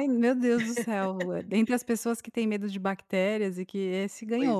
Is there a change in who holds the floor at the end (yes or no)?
yes